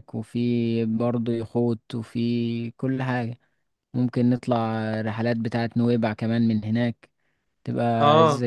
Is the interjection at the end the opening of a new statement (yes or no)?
yes